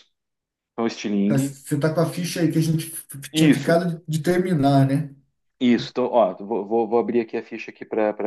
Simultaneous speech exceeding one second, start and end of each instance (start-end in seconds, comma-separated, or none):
none